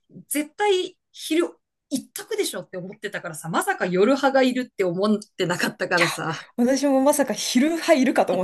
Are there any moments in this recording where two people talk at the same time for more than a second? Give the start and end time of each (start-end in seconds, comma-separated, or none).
none